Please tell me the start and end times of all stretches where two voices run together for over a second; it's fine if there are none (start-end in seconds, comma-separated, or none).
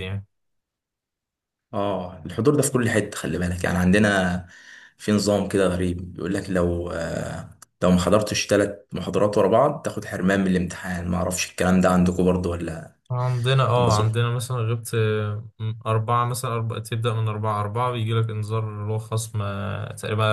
none